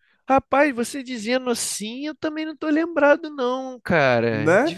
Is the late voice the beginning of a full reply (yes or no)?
no